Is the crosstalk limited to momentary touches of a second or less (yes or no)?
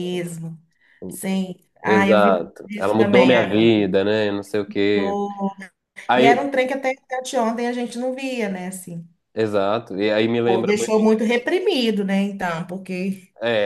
no